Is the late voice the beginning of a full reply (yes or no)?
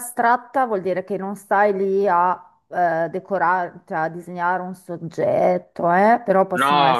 no